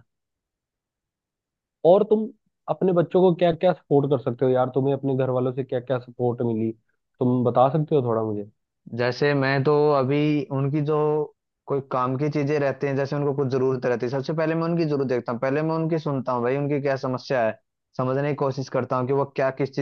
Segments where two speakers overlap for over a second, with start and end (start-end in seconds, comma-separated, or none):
none